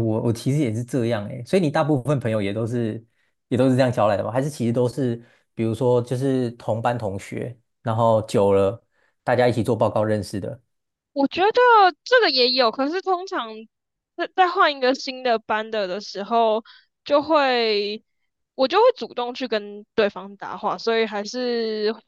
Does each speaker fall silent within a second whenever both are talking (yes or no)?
yes